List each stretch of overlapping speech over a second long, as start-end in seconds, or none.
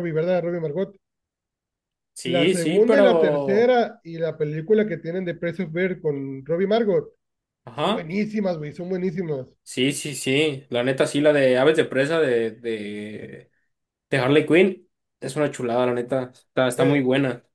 2.2-3.7